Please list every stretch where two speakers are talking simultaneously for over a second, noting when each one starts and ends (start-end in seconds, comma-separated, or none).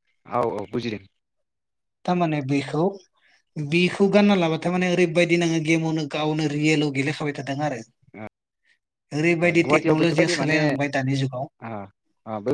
9.6-11.4